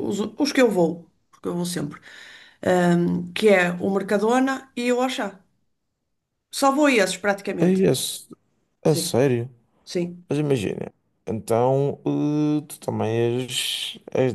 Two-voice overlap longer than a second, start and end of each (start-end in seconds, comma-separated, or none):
none